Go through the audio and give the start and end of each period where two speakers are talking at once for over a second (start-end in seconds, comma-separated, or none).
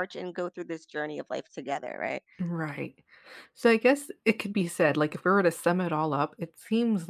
none